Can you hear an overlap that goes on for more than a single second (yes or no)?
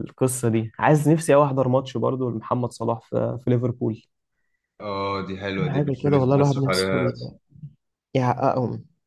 yes